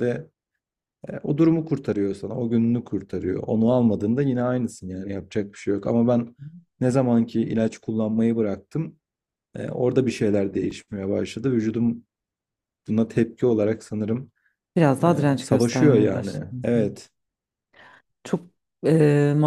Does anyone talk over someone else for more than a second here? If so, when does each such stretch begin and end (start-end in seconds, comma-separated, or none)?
15.0-17.1